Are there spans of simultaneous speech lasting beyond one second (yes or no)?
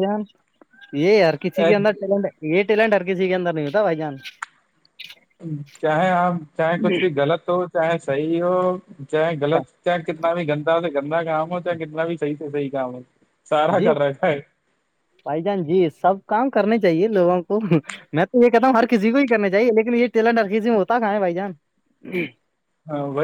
no